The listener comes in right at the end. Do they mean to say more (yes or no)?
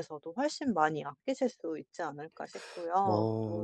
yes